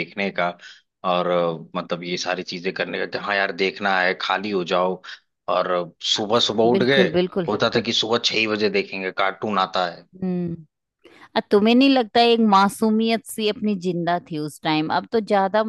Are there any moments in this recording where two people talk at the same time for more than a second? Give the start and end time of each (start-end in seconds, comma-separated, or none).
none